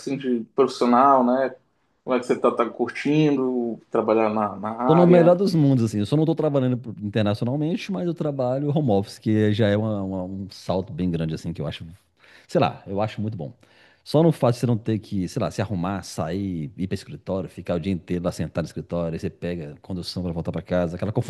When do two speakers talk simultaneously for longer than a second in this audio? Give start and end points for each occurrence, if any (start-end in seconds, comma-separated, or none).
none